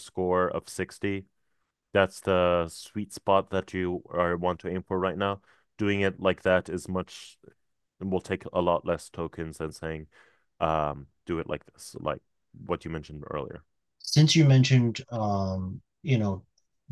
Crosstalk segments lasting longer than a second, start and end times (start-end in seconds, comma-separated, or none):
none